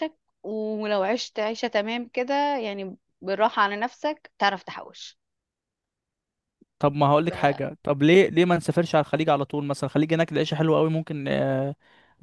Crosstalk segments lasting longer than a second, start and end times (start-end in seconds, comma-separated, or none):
none